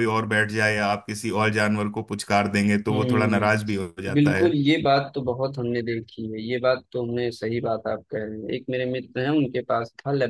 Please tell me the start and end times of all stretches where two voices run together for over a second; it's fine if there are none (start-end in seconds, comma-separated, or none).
2.9-4.5